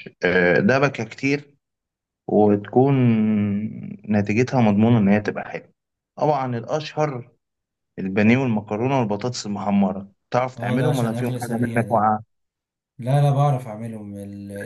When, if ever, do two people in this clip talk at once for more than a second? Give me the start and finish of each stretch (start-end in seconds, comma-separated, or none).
10.6-12.1